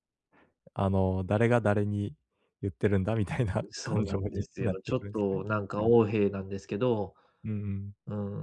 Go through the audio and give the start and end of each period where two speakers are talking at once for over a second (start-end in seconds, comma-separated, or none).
3.7-5.9